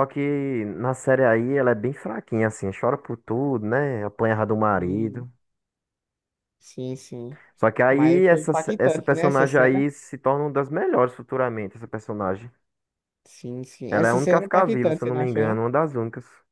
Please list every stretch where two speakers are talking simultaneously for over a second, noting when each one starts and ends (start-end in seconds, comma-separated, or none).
7.9-9.8, 13.9-15.6